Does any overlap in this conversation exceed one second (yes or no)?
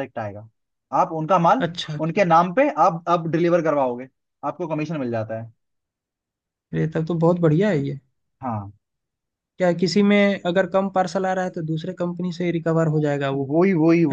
no